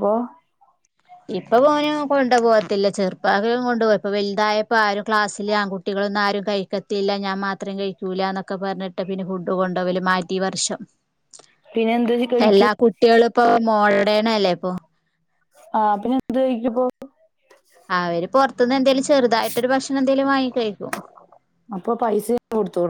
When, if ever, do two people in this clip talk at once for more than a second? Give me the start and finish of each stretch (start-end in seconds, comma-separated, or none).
none